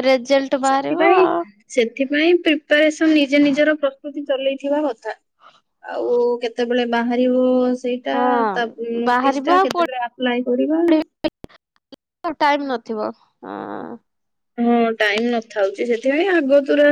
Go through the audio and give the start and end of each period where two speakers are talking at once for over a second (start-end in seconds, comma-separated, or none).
none